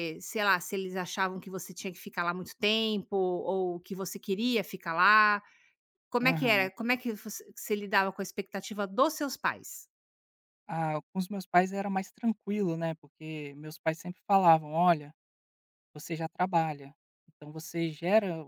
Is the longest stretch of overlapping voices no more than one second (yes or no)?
yes